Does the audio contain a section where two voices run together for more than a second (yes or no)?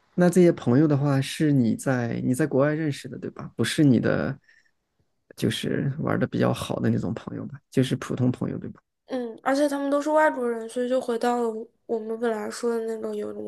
no